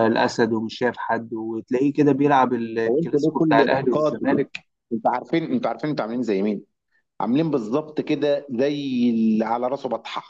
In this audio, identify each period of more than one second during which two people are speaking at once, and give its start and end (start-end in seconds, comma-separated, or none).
2.9-4.4